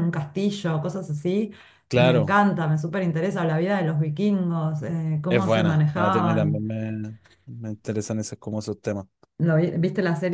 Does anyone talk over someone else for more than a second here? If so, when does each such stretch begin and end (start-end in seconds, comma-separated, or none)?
5.3-6.7